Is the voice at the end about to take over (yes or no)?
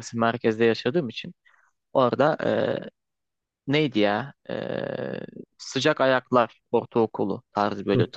no